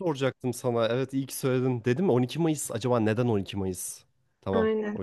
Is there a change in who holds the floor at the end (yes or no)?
yes